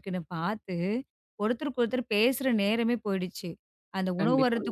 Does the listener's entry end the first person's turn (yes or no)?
no